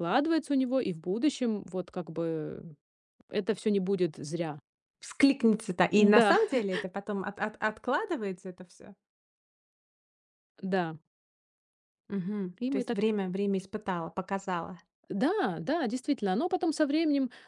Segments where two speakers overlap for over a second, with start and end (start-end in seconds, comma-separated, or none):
none